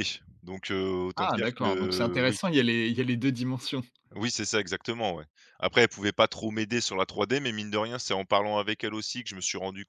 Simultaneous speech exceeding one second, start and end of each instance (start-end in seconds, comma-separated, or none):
1.2-2.4